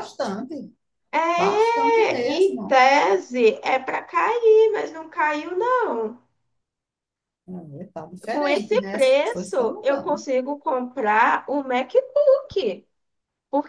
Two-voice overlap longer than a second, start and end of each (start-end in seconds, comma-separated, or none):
8.3-10.2